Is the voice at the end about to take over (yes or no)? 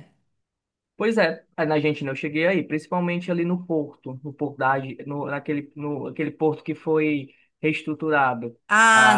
yes